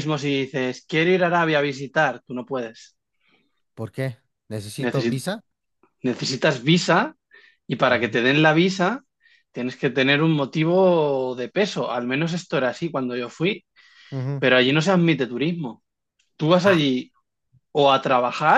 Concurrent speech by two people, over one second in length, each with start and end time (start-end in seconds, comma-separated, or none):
none